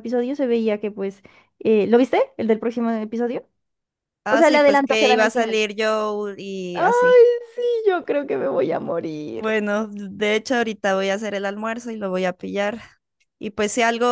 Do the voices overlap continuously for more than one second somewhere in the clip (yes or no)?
yes